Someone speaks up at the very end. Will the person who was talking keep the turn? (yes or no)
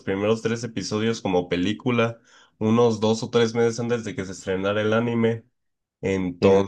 yes